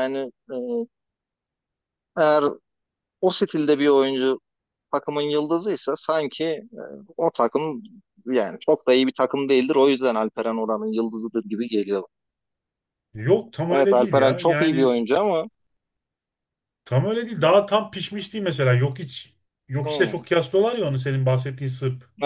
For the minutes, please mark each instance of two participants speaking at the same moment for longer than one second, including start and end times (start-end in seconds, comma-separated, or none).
13.7-15.0